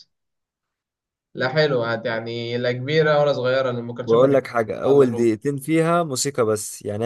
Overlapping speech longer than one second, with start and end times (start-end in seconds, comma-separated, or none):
4.0-5.4